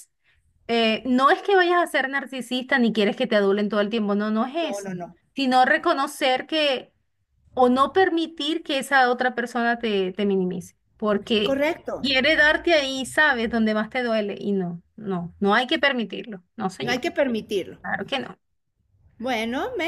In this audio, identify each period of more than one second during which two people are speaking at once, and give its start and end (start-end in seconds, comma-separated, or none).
none